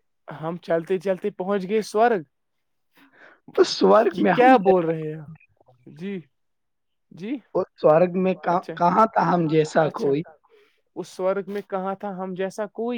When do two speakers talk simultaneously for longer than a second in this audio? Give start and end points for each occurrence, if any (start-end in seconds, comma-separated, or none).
none